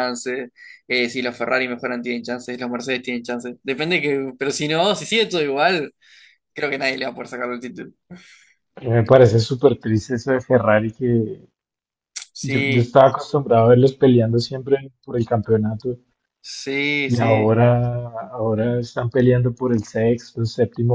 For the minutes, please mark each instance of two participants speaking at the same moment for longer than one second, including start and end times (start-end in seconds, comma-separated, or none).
none